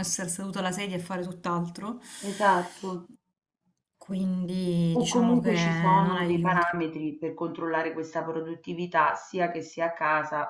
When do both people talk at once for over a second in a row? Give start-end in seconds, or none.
4.9-6.7